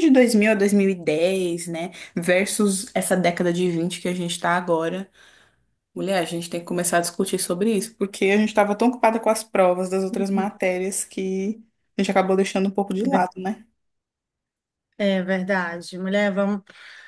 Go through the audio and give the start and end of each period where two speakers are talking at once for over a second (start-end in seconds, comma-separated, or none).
none